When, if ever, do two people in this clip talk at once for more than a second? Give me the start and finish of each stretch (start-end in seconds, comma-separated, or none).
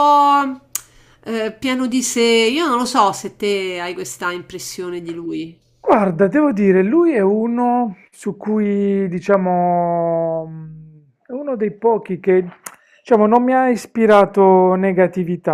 none